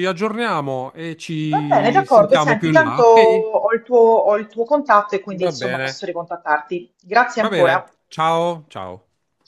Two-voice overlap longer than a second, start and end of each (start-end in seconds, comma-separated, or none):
1.5-3.5